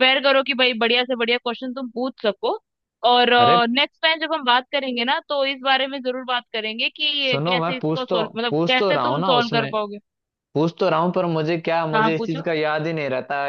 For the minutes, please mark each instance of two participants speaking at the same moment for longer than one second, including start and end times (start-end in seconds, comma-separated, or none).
7.2-9.7